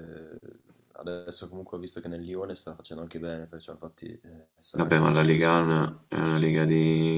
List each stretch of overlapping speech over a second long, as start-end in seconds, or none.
4.8-6.0